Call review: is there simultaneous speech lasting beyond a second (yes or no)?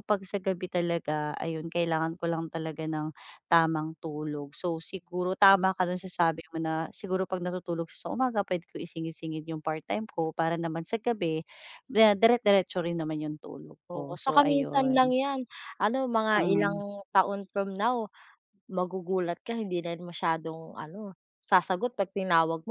yes